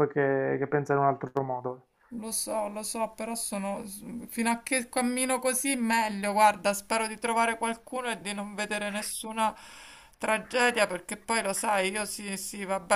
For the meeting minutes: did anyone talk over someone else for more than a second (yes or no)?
no